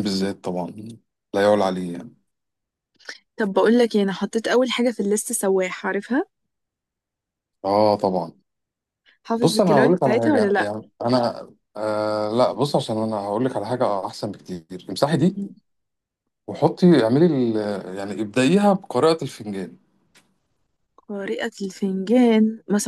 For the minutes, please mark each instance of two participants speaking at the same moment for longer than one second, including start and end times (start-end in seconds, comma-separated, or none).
9.4-10.7